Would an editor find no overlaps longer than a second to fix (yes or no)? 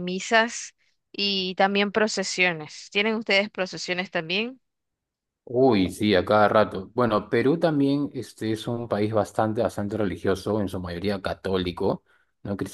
yes